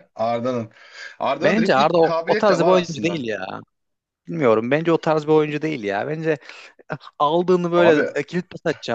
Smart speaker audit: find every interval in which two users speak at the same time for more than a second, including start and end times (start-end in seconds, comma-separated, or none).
1.4-3.2